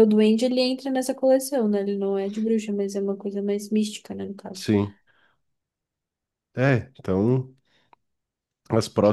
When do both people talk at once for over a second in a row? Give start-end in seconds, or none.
none